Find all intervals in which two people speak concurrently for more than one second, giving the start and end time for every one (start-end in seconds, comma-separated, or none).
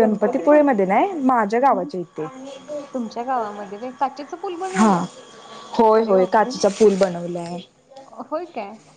none